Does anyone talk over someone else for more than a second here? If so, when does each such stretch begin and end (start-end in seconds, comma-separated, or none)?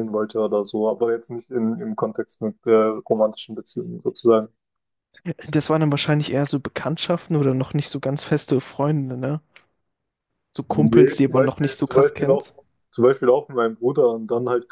10.7-12.5